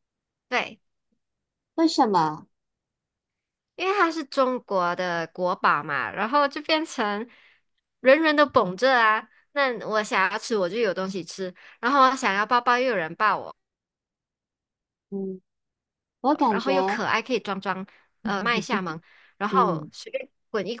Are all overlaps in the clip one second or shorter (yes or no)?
yes